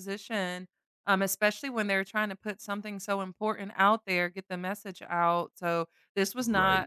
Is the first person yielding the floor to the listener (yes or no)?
no